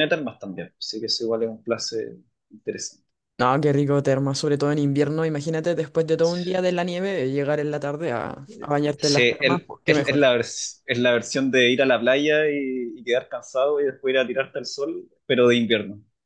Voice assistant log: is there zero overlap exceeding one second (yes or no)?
no